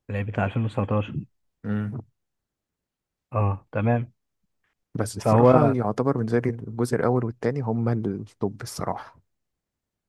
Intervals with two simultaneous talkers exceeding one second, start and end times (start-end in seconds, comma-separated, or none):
none